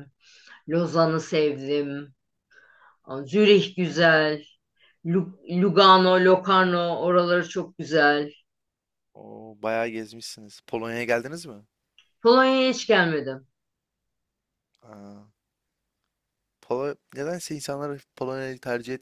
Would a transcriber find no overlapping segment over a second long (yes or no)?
yes